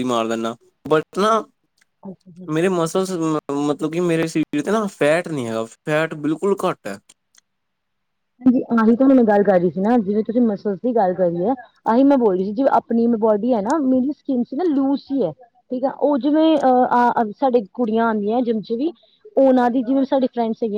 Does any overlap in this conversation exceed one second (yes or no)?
no